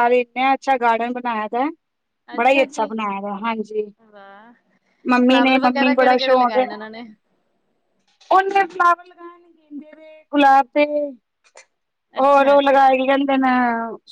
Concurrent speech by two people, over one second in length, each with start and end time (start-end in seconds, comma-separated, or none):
5.3-6.6